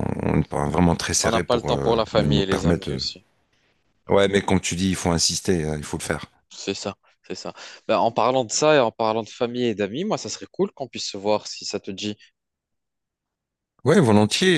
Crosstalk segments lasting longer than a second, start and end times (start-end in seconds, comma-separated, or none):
1.2-3.0